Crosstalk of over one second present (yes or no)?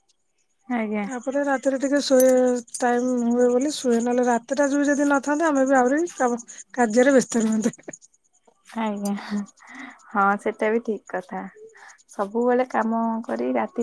no